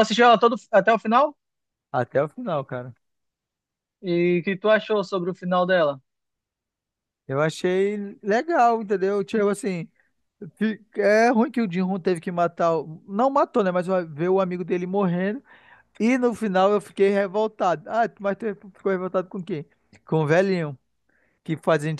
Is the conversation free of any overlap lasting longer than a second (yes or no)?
yes